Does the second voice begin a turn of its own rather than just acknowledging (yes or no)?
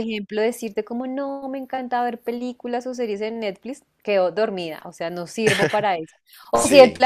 no